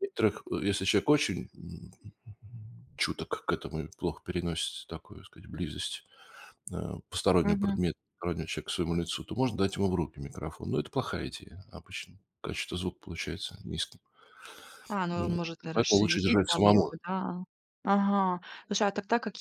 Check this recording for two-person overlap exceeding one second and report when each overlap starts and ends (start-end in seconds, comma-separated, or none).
15.1-16.9